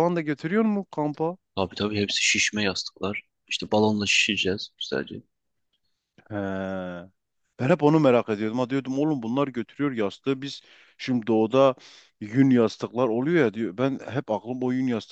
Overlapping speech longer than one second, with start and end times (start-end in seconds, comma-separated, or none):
none